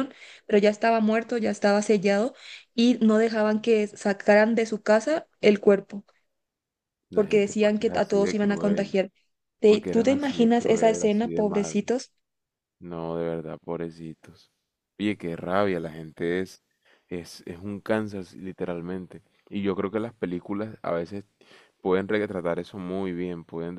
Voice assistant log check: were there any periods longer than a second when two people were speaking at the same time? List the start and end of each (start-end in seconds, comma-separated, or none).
7.1-9.0, 9.7-11.9